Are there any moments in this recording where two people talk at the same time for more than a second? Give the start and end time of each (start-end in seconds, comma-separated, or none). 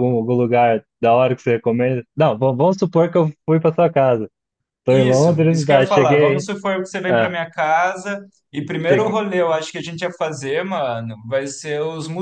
4.9-6.5